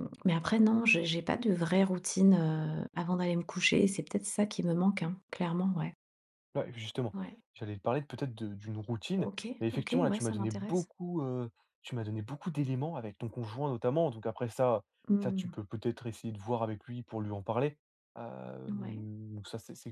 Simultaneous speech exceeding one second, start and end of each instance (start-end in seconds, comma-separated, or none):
9.2-10.9